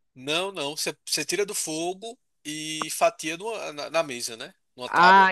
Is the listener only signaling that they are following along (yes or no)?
no